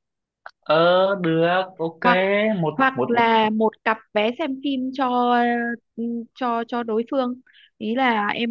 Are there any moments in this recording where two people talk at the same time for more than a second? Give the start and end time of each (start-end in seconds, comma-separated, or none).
none